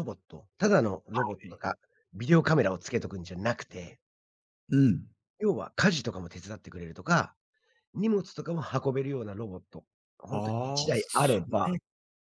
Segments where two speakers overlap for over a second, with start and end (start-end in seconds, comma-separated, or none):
10.3-11.8